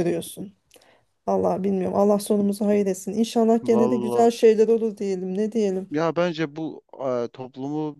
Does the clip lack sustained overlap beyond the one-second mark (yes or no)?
yes